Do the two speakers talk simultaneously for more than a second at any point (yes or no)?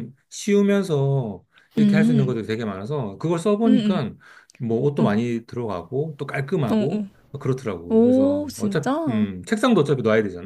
yes